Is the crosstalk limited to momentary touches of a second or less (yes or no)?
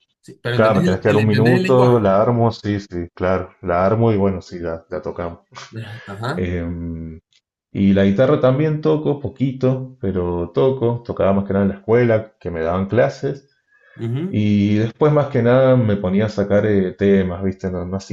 no